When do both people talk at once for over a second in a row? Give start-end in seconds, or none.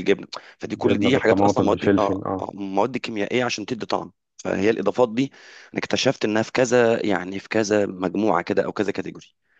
0.7-2.4